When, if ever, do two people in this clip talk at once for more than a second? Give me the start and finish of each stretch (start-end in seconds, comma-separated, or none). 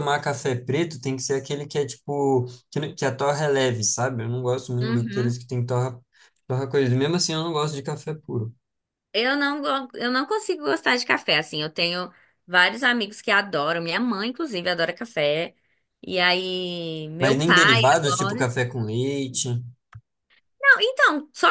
17.2-18.5